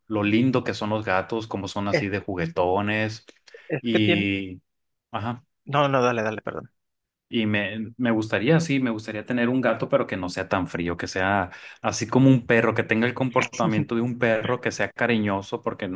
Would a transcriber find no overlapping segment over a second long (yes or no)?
yes